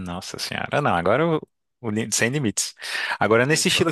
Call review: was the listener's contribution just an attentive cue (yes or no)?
yes